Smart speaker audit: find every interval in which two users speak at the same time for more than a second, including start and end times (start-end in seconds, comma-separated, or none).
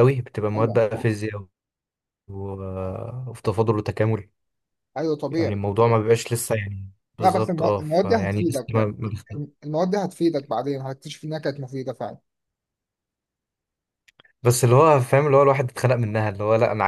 7.2-8.9